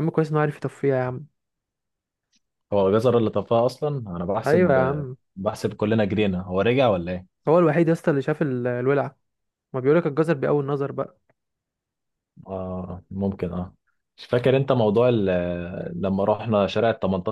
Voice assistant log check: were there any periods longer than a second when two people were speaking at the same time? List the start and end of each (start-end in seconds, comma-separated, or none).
none